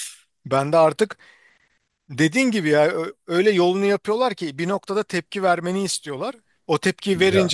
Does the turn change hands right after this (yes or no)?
no